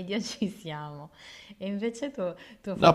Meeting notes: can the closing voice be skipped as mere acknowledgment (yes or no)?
no